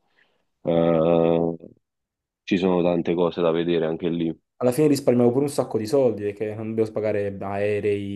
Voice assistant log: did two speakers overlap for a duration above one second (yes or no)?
no